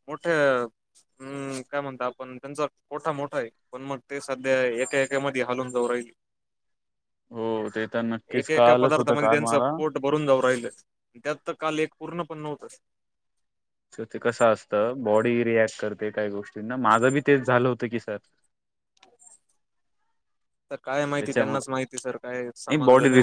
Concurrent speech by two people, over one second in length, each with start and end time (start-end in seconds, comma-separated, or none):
8.4-9.7